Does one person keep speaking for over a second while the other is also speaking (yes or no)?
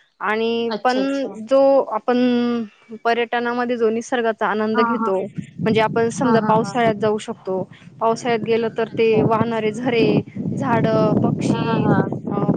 no